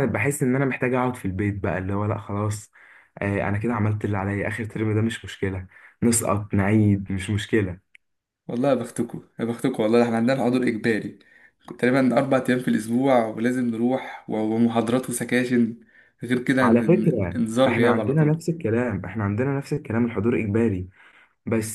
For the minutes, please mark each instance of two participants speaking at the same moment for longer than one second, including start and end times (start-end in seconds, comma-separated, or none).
16.6-18.4